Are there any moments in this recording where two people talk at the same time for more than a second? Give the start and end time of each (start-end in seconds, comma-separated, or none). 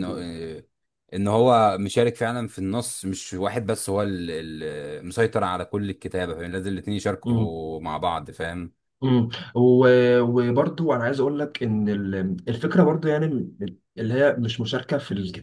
none